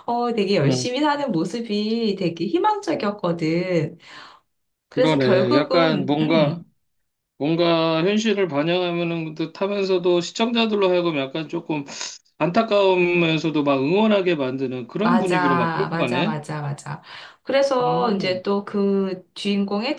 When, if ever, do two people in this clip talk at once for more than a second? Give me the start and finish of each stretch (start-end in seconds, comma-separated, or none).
5.0-6.6, 15.1-16.4